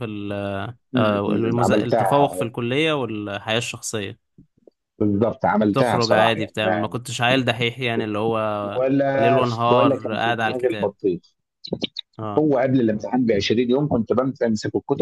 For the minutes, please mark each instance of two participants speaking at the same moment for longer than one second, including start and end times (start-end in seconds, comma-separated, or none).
1.0-2.5, 5.6-7.0, 8.8-10.9